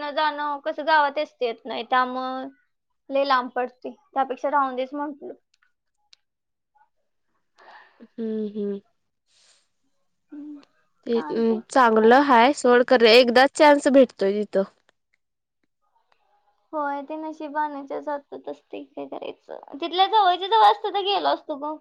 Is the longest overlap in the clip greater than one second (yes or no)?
no